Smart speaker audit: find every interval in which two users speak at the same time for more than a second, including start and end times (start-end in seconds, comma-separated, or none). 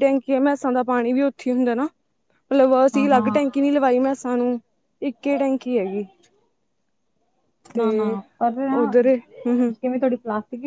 none